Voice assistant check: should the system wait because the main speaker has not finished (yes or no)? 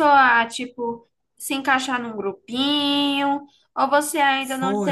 no